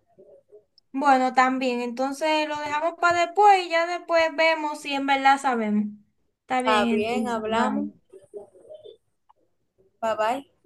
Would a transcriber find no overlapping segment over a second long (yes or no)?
no